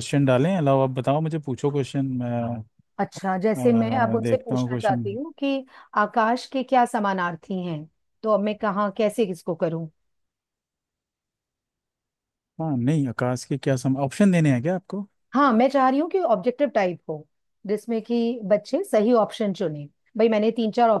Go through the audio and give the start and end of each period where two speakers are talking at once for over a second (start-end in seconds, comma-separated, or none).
3.6-5.0